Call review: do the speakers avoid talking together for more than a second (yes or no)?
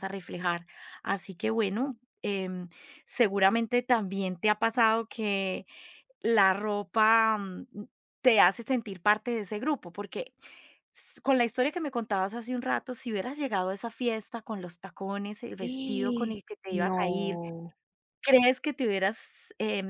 no